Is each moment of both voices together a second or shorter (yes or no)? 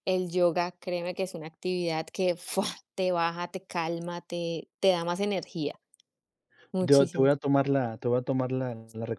yes